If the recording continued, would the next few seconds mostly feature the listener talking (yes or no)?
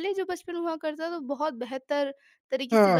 yes